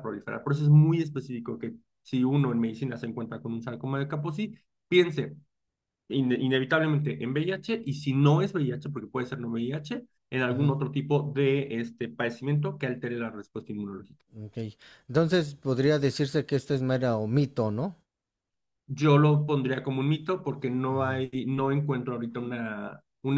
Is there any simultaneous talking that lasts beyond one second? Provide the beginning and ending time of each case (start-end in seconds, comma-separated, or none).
none